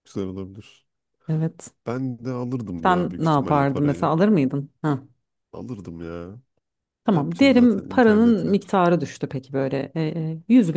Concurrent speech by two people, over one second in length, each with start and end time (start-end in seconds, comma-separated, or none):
2.8-4.1, 7.1-8.6